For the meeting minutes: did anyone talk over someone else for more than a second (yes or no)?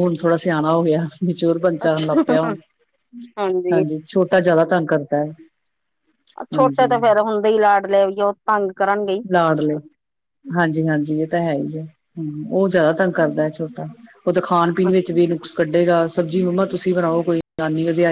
no